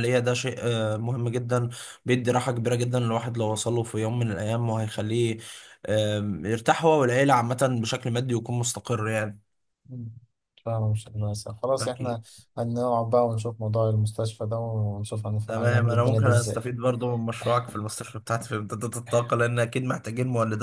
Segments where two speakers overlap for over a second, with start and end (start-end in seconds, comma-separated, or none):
15.4-16.7